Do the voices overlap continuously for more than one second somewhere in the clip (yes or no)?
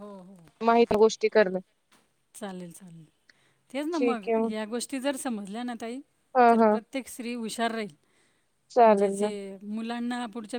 no